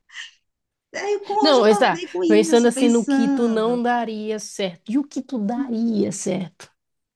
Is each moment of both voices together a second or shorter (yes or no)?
no